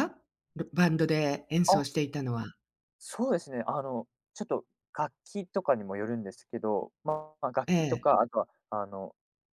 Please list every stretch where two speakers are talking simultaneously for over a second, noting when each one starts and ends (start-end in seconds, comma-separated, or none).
none